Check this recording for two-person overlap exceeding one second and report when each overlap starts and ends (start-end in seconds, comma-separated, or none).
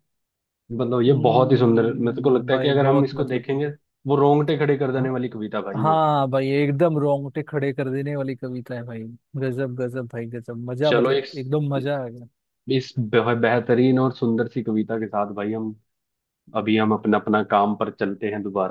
1.1-3.5